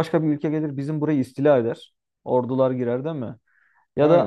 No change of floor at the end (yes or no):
yes